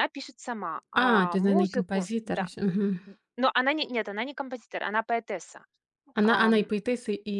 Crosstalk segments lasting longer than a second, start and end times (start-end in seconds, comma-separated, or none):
0.9-2.5